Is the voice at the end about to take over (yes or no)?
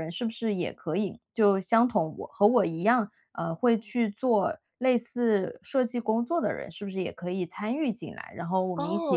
yes